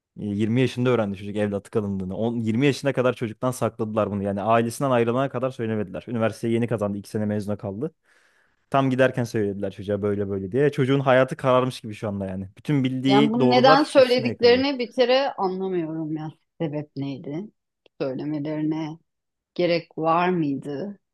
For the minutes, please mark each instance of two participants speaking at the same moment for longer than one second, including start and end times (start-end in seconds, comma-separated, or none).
13.1-14.7